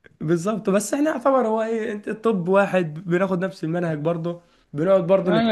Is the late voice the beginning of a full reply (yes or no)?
yes